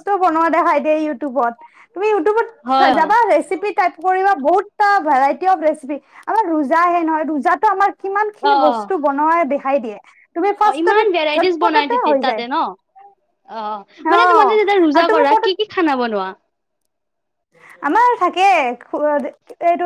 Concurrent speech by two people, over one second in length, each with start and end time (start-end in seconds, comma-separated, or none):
10.7-12.4